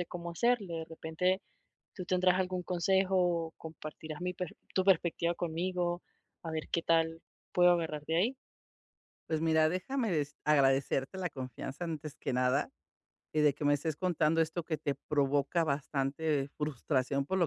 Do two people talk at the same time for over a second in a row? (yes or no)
no